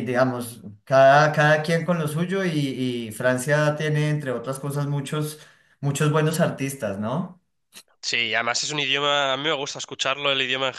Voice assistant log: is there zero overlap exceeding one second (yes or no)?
yes